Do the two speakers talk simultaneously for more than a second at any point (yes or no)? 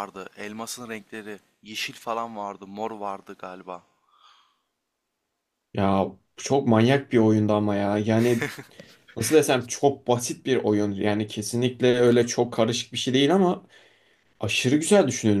no